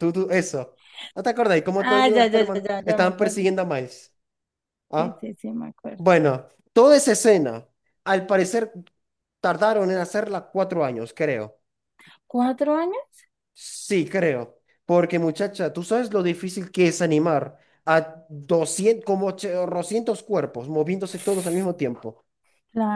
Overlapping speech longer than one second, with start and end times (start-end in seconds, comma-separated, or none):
1.8-3.4